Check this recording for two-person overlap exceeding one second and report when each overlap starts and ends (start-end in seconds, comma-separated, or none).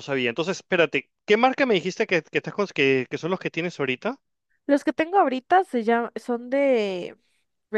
none